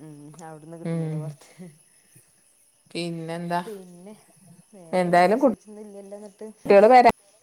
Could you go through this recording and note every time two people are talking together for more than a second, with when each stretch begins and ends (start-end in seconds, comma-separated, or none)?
5.0-6.5